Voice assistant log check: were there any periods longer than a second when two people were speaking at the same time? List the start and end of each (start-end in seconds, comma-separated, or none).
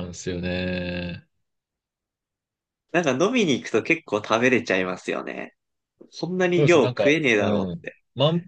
6.5-8.0